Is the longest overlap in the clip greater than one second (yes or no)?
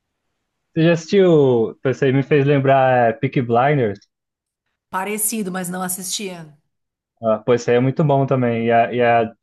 no